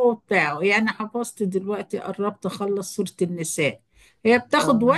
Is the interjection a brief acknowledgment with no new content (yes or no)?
yes